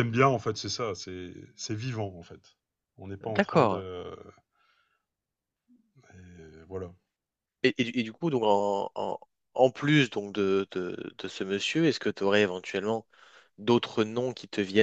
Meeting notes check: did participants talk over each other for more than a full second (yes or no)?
no